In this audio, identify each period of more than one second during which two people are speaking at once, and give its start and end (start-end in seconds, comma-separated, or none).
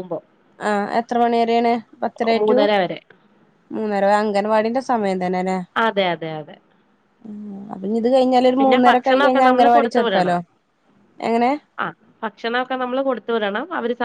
8.6-10.4